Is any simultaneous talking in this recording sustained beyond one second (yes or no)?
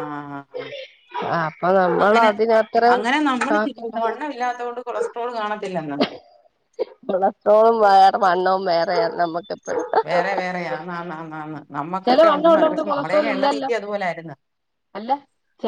yes